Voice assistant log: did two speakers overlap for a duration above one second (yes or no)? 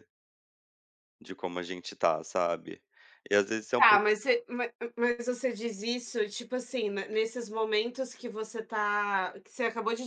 no